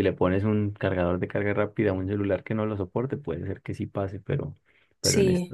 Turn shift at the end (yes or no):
no